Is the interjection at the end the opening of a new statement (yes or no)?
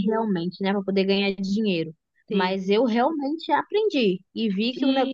yes